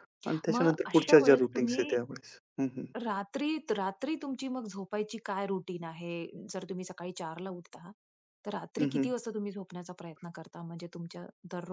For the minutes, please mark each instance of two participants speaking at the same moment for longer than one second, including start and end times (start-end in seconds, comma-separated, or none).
0.5-1.9